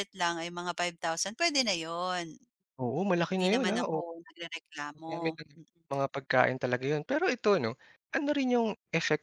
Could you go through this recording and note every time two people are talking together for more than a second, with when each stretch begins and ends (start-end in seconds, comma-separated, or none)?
none